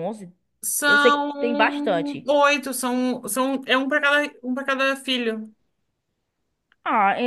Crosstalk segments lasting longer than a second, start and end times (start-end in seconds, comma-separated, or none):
0.9-2.3